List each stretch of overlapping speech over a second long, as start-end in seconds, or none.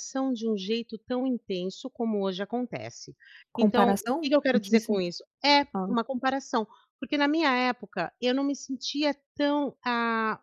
3.6-5.0